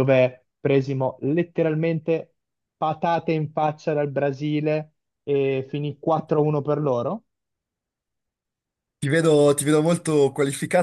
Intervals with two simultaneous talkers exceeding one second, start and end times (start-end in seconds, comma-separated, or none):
none